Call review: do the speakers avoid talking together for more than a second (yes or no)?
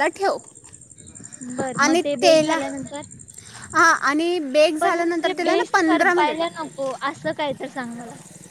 no